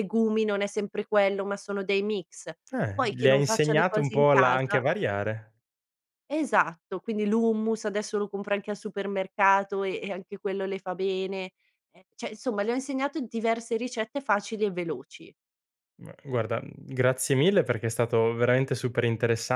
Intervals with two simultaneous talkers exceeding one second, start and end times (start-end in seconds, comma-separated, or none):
2.9-4.8